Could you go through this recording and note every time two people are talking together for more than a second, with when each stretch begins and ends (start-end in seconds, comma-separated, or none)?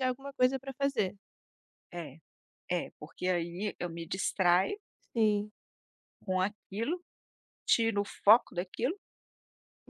none